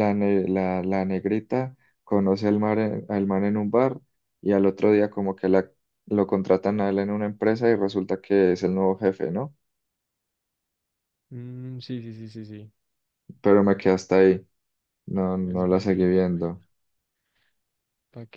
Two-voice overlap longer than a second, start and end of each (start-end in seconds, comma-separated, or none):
15.4-16.6